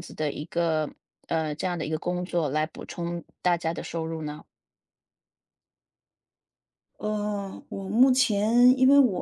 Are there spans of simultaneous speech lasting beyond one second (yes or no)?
no